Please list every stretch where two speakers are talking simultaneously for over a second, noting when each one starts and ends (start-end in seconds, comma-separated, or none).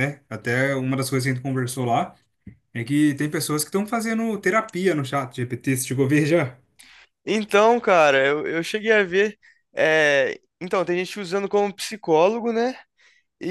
none